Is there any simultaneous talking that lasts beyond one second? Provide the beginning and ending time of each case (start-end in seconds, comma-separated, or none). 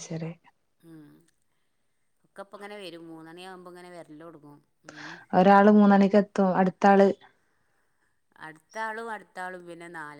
none